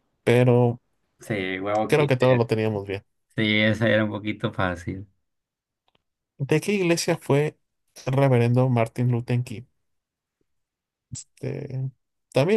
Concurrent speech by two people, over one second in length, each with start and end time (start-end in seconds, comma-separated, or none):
none